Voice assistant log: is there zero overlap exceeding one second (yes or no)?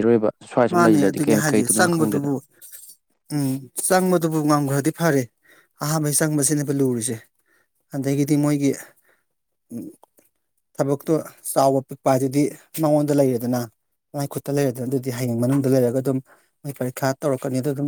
no